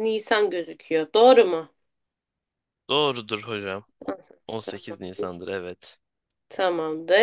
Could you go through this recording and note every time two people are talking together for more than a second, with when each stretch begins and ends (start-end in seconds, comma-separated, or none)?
none